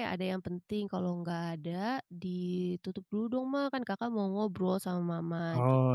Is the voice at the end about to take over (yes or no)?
no